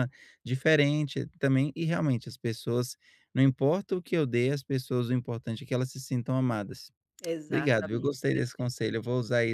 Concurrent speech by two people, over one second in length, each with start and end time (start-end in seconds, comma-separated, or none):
7.5-8.8